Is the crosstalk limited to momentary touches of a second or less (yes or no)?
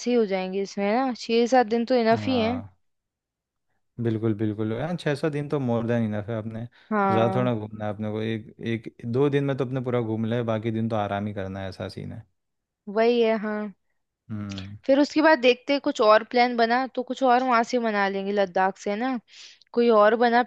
yes